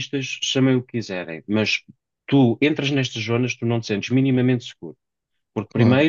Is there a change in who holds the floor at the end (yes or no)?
no